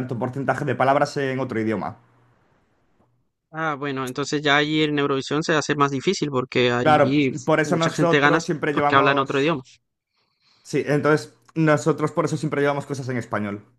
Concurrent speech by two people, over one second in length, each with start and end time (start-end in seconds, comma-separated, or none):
6.8-9.5